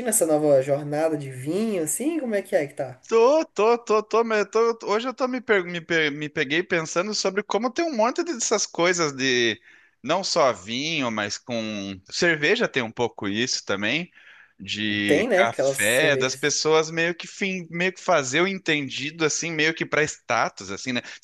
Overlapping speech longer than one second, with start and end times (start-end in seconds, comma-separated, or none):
15.1-16.5